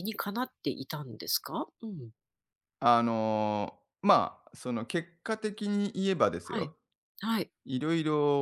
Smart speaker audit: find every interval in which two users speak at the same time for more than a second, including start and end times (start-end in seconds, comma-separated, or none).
none